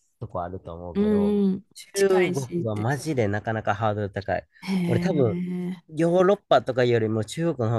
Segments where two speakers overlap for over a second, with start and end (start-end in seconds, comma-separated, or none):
0.9-3.0